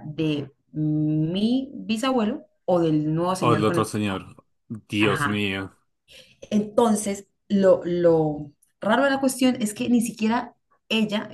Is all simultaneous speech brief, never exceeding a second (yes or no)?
yes